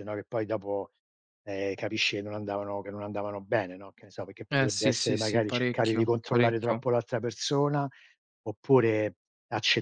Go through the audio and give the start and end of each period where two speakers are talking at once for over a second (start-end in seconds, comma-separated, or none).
4.5-6.9